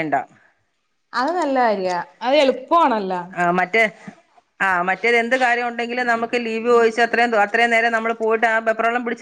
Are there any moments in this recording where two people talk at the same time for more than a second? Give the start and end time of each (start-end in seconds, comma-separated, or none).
none